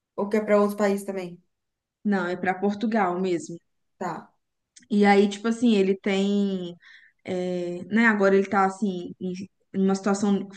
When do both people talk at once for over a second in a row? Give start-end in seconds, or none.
none